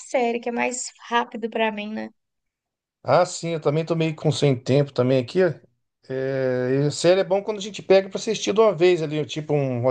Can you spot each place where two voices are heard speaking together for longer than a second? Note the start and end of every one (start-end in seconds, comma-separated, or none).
none